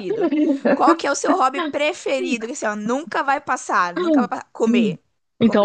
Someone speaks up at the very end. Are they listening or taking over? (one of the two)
taking over